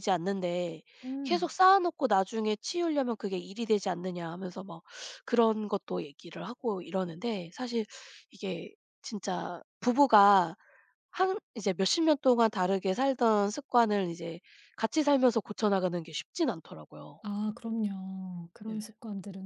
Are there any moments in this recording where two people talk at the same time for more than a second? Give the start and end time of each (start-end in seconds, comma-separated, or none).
none